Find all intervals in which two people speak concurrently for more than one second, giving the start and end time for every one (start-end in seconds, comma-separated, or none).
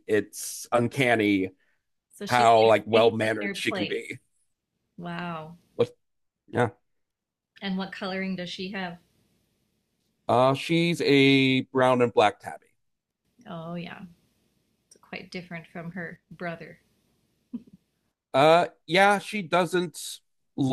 2.3-4.1